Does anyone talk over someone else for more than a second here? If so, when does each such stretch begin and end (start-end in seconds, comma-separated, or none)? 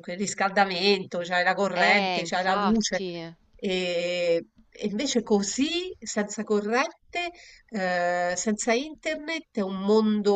1.7-3.0